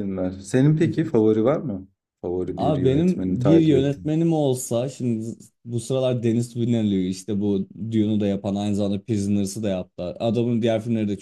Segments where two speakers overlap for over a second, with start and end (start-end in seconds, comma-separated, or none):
2.6-4.1